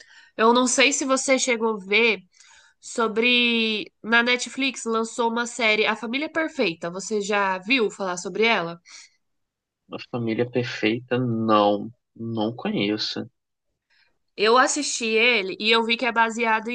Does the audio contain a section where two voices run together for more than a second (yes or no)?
no